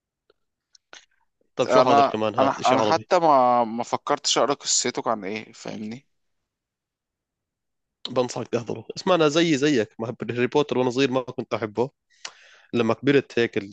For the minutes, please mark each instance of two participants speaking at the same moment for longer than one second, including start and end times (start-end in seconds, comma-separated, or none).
1.7-3.1